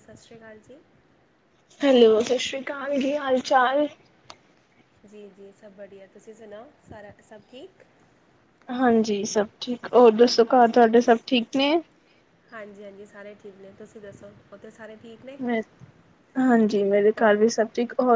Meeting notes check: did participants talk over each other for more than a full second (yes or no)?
no